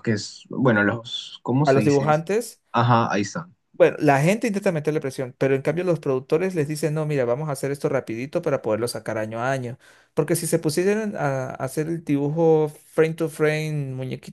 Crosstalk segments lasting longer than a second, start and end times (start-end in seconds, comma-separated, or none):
none